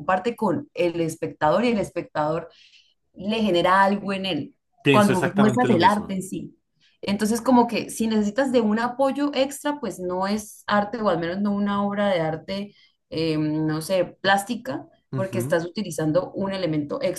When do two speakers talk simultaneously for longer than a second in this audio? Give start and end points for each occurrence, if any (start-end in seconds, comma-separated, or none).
4.9-6.1